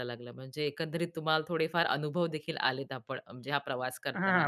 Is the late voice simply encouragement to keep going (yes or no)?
no